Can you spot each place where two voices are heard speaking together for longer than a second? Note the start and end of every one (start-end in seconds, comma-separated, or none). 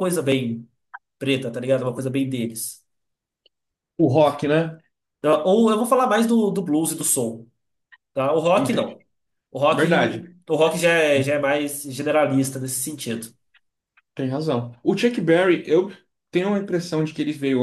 none